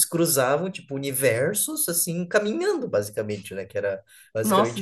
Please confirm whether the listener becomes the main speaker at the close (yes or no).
no